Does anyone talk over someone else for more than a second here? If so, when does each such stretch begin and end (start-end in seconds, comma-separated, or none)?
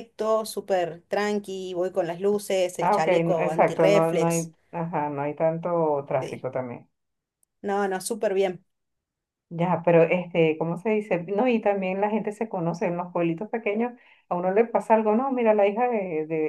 2.8-4.5